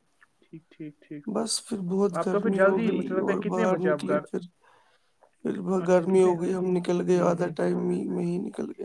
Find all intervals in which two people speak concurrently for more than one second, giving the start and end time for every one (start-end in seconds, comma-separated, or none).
2.2-4.2